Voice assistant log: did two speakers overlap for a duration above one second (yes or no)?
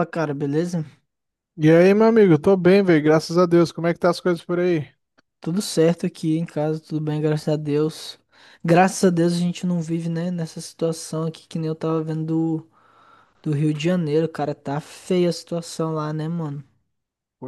no